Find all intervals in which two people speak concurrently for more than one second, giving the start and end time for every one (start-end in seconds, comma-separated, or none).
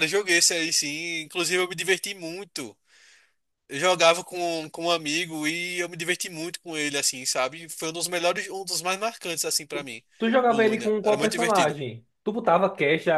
10.5-11.8